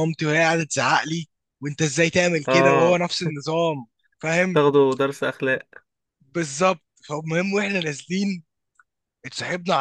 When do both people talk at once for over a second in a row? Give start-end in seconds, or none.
none